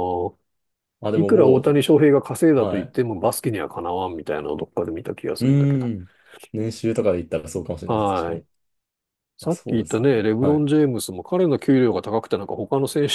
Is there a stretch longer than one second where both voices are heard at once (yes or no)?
yes